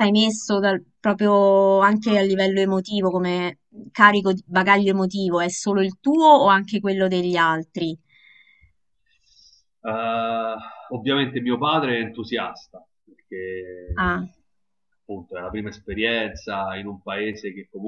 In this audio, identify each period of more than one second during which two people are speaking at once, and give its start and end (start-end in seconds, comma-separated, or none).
none